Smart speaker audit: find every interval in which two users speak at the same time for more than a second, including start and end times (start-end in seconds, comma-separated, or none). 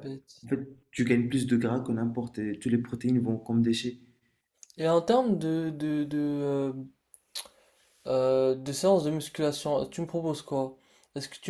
none